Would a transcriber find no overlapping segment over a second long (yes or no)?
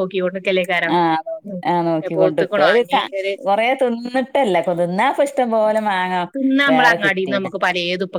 yes